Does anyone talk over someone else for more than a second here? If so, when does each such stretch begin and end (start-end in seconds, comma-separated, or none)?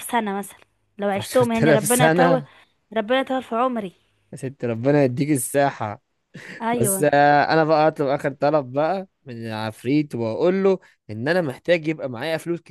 1.1-2.4